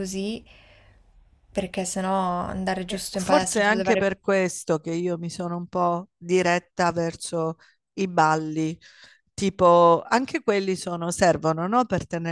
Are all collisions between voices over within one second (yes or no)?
no